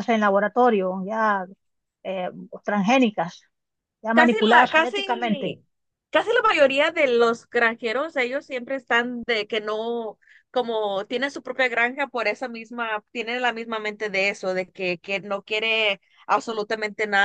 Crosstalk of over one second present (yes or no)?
yes